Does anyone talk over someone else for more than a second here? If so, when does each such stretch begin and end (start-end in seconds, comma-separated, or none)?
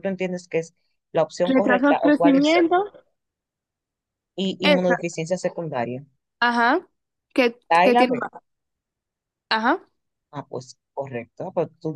1.4-2.7